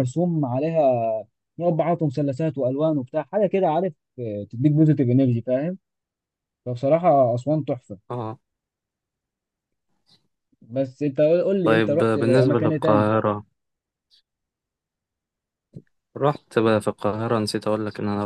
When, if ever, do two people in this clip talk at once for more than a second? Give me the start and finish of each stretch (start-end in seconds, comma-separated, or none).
11.6-13.2